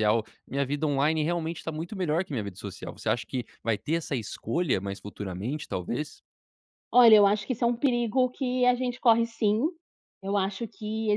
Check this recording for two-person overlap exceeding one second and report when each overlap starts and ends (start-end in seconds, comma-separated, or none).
none